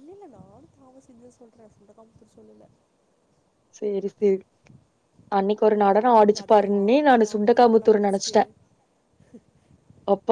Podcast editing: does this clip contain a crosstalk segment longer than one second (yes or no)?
yes